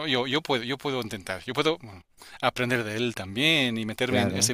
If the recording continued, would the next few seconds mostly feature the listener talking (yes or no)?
no